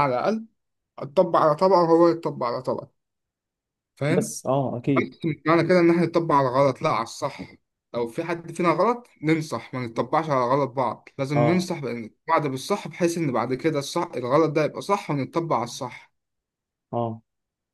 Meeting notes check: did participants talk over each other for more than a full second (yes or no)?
no